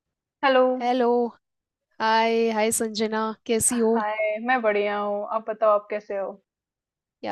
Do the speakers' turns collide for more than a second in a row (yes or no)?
no